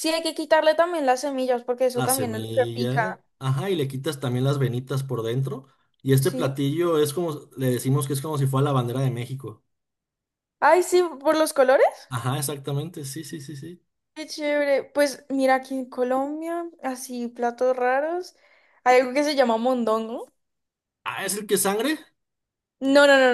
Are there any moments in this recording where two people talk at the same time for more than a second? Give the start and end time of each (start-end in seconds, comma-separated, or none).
1.9-3.2